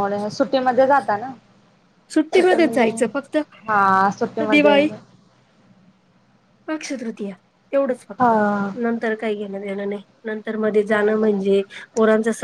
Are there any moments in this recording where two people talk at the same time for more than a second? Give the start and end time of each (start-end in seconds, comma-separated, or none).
none